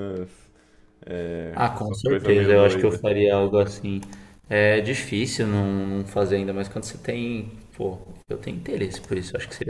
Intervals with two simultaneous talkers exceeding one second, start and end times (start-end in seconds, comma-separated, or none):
1.5-3.0